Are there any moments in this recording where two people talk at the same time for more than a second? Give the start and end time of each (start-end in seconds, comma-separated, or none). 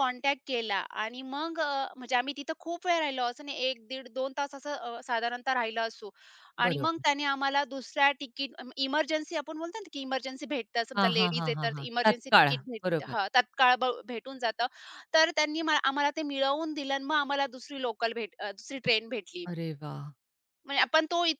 11.0-13.2